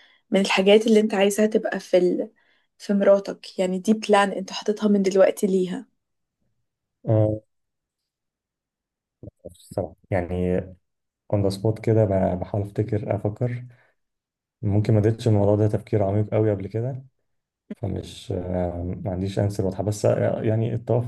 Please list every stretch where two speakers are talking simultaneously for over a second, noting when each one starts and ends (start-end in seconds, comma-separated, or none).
none